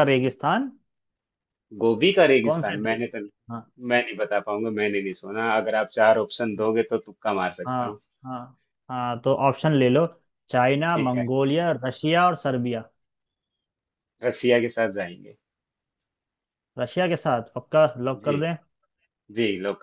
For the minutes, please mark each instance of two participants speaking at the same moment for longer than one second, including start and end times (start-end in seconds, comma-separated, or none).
none